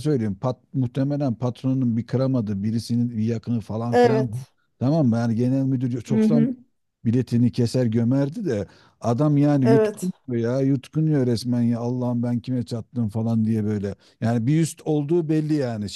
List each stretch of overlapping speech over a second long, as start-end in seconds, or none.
none